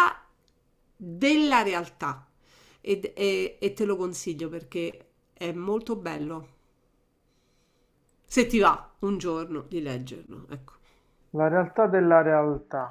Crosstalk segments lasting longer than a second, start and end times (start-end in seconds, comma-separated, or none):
none